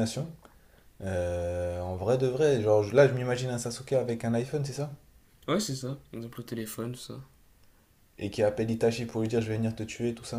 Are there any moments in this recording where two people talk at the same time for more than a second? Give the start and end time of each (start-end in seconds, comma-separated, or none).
none